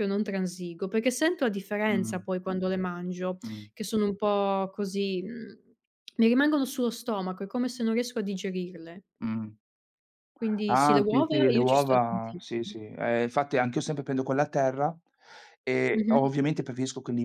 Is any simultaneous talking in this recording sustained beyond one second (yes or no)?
yes